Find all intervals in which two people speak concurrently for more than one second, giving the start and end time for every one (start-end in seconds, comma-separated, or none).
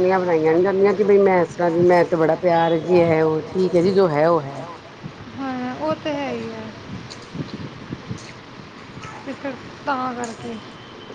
none